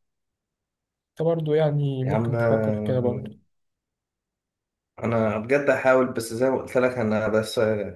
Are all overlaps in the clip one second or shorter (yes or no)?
no